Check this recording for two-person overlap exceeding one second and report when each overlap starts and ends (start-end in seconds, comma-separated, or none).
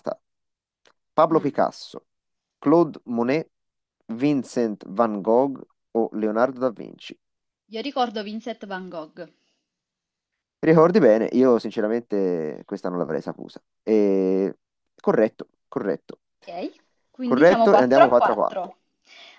17.2-18.7